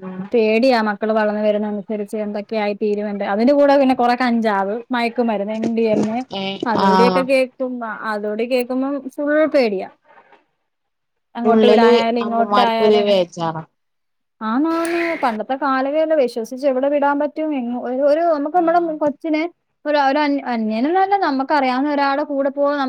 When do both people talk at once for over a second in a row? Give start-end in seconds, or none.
none